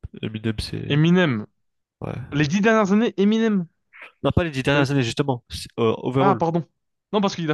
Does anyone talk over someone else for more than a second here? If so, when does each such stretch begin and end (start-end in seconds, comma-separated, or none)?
none